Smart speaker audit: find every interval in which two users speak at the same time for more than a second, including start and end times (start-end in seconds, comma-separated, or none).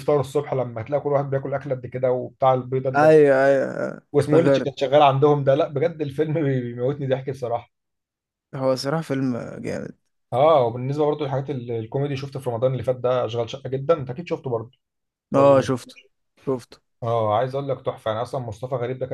none